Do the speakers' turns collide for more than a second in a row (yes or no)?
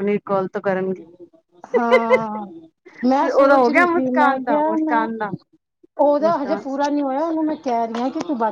yes